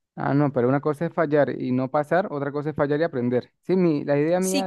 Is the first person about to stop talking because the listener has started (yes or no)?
yes